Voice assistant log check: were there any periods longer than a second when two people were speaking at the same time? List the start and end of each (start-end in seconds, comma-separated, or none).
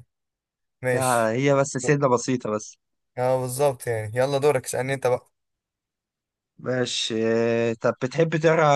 none